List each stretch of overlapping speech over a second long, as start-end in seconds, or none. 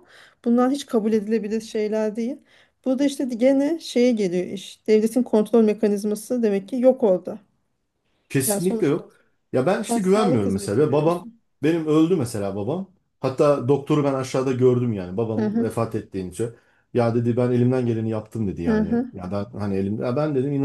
9.9-11.3